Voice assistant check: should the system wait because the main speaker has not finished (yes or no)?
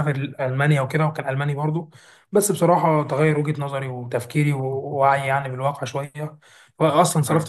yes